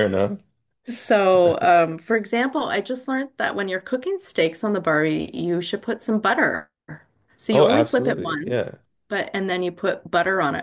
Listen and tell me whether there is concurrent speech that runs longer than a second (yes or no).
yes